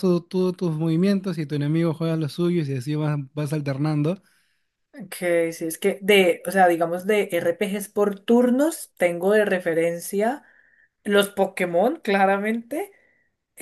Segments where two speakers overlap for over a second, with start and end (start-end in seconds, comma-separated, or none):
none